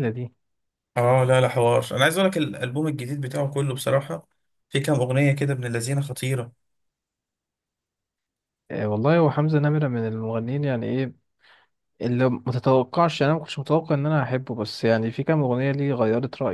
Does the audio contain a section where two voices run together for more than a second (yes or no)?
no